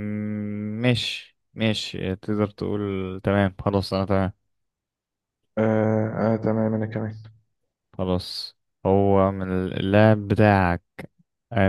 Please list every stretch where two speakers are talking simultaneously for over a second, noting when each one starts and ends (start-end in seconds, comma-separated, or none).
none